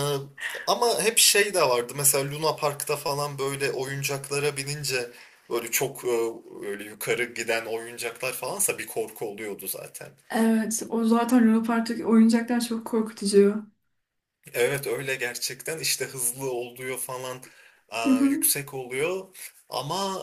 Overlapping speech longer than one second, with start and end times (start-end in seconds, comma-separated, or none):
none